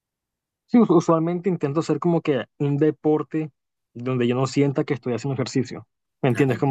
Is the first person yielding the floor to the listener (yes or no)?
no